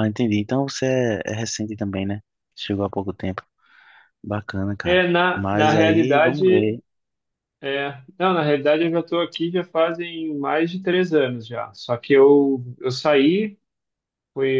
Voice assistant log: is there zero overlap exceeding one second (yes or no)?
no